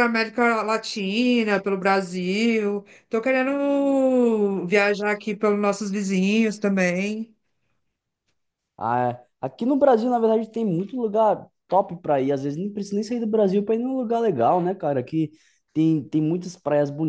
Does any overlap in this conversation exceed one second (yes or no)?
no